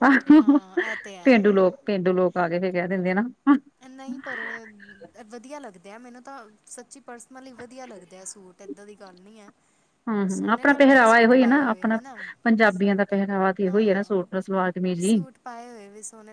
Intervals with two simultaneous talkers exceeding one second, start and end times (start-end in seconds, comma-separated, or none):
10.3-12.0